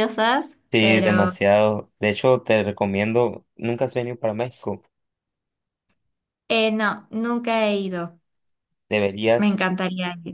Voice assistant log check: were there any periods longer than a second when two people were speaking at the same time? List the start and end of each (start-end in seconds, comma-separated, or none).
none